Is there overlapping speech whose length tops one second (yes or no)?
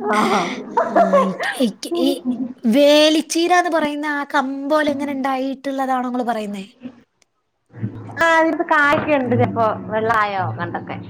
no